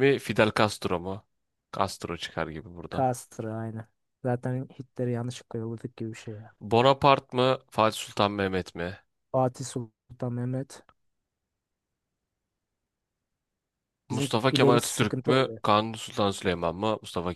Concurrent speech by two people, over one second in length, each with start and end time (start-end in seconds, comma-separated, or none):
14.1-15.6